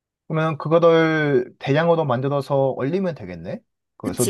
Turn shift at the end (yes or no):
yes